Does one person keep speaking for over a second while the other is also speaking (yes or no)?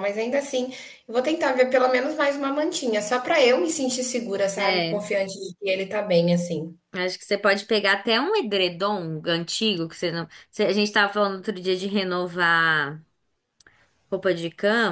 no